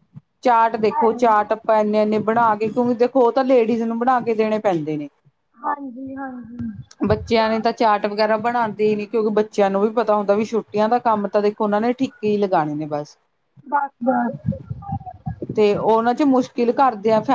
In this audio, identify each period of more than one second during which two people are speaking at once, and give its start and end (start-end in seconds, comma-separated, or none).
none